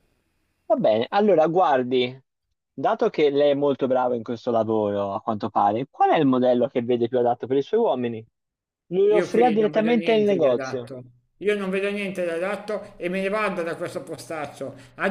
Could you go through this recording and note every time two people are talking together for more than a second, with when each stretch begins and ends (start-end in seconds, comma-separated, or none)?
9.2-10.9